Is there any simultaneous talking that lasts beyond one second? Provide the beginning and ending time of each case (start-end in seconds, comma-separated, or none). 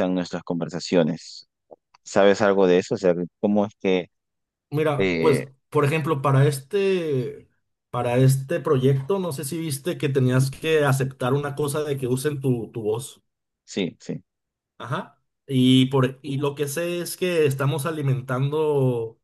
none